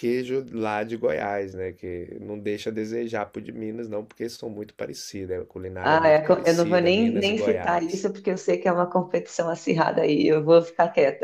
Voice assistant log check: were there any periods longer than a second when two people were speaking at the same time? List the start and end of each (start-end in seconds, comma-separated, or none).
5.8-8.1